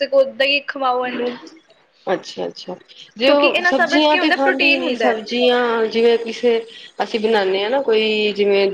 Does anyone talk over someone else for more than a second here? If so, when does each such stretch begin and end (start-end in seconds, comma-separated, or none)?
3.2-5.2